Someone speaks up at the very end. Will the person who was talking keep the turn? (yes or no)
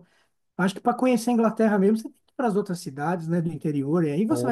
no